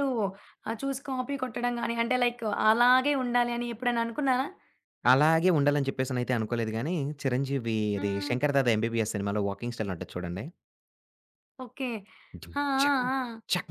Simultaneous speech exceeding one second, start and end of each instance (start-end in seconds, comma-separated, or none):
none